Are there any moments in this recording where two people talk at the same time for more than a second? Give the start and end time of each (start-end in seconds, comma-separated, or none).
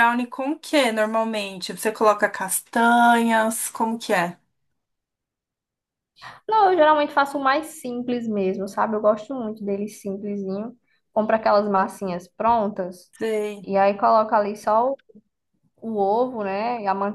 none